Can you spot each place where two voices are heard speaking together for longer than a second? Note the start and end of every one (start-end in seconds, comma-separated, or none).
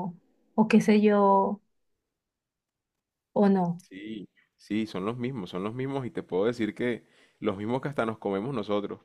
none